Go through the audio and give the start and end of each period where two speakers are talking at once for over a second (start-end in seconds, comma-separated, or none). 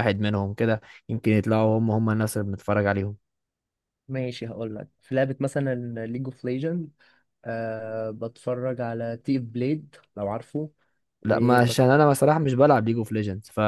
none